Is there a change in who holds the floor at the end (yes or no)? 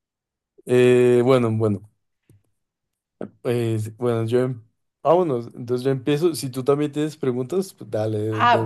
yes